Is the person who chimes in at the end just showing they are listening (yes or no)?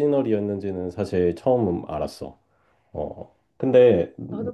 no